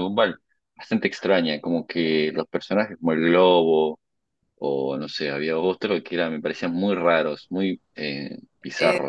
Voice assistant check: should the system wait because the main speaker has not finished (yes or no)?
no